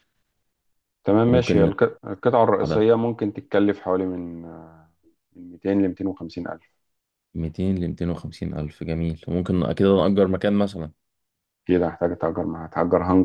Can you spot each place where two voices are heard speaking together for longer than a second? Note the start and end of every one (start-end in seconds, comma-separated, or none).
none